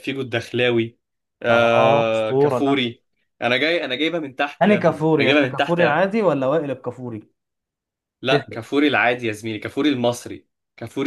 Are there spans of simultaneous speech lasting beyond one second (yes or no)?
yes